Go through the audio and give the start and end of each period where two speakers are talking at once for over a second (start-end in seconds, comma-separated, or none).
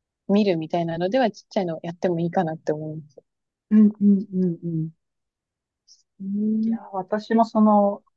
none